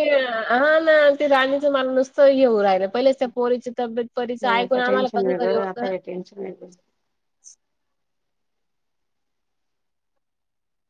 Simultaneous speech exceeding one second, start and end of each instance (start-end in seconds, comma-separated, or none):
4.5-5.9